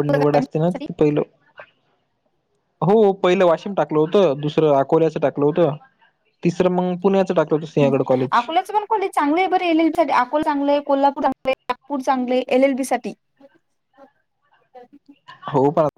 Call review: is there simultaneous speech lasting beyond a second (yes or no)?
no